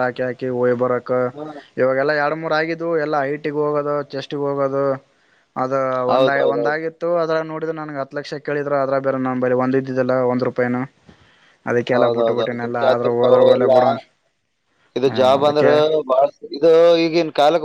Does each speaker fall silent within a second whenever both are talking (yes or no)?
no